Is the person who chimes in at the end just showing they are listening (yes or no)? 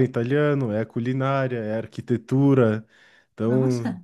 yes